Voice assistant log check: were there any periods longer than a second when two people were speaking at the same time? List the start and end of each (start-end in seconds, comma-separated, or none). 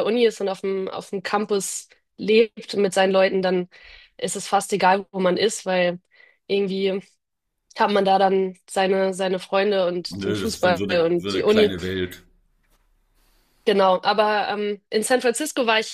10.1-11.8